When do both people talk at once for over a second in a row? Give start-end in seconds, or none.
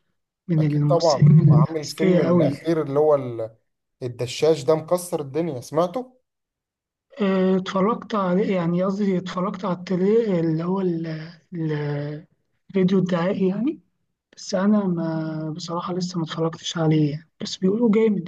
0.6-2.5